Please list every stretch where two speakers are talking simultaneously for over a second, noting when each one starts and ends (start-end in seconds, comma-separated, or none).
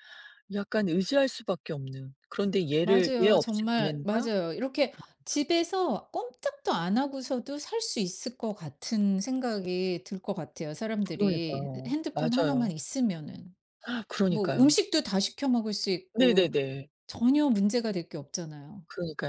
2.8-4.3, 11.1-12.7